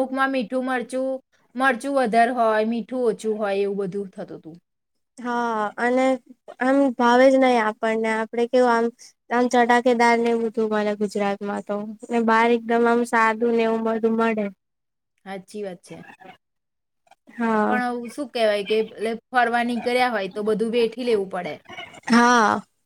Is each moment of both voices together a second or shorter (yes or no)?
yes